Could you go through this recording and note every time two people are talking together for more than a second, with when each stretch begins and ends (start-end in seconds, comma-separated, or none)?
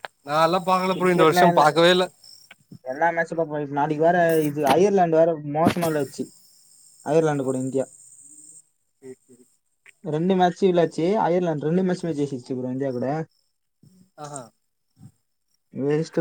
none